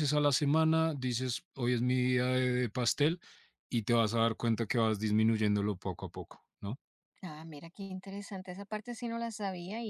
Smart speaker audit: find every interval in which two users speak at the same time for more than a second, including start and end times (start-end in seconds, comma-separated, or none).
none